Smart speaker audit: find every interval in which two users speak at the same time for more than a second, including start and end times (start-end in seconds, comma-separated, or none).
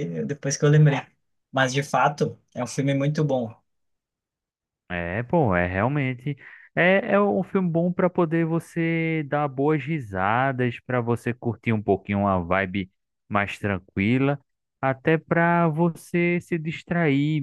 none